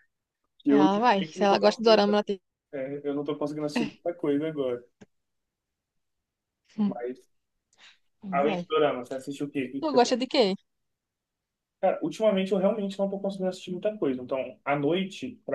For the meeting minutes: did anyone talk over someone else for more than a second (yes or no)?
yes